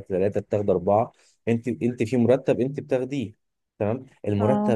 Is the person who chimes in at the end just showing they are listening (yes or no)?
yes